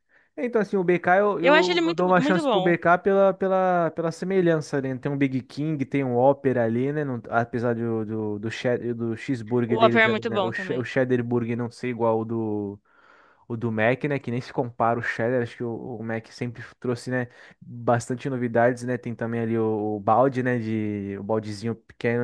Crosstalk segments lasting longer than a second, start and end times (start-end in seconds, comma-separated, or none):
1.4-2.7, 9.7-10.9